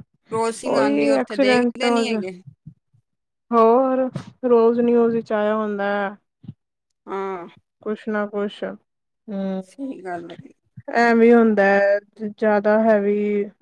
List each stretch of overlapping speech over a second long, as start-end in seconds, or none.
0.7-2.1